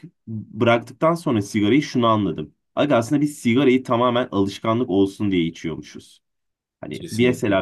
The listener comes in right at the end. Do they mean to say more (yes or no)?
no